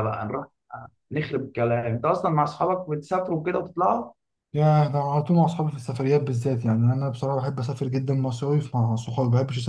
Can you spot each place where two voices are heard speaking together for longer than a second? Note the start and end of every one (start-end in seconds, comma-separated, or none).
none